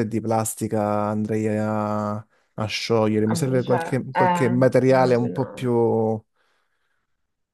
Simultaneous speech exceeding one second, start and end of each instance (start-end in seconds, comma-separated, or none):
3.2-5.7